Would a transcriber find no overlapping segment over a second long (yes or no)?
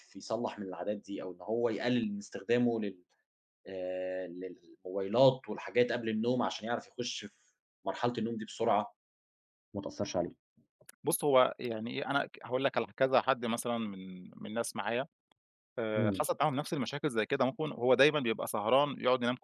yes